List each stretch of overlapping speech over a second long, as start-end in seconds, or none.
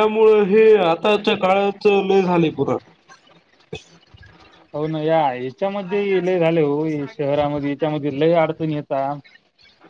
none